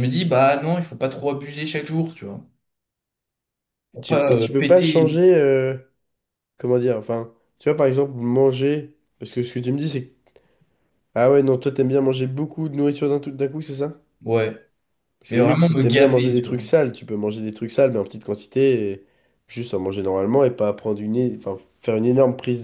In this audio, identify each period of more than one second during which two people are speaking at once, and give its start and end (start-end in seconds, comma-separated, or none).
4.0-5.2, 15.3-16.6